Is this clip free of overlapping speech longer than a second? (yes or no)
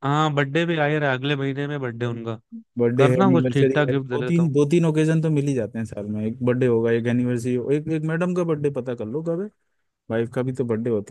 no